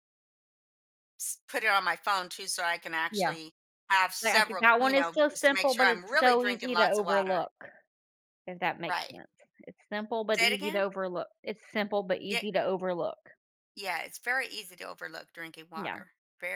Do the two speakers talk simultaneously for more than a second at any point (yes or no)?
yes